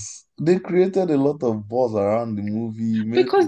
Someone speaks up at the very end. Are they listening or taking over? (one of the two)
taking over